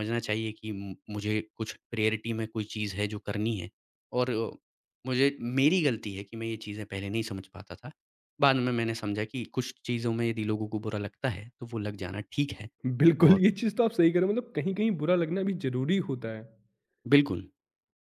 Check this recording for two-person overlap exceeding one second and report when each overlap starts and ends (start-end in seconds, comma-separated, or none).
none